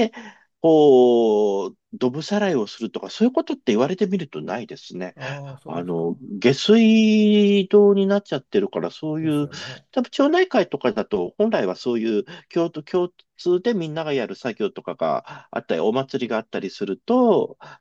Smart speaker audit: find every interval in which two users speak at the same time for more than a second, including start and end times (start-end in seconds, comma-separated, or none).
none